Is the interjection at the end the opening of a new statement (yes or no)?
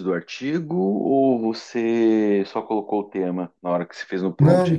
yes